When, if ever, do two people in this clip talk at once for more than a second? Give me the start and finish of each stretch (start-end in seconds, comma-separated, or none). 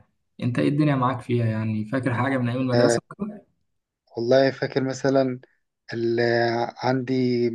none